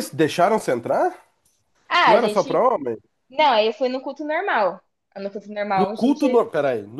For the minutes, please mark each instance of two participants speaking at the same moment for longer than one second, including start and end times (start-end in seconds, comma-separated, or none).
none